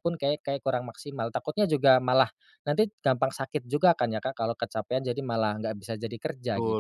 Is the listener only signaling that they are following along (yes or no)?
no